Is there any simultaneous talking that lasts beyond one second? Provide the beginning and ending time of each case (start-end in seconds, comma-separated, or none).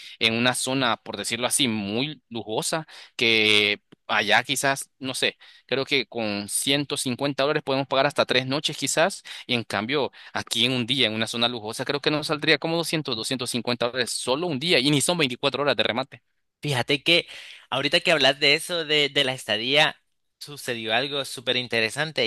none